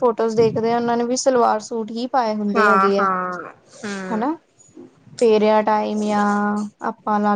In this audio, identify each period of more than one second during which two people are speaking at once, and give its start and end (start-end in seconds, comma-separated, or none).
none